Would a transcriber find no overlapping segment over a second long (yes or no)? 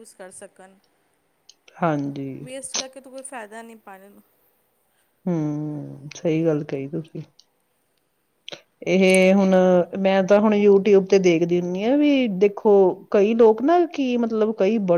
yes